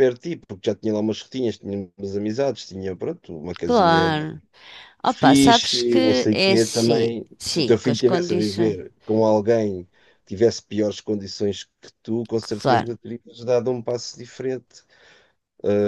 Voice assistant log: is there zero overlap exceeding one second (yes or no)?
no